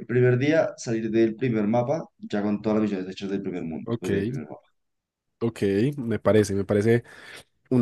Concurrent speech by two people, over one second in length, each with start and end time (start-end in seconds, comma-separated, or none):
none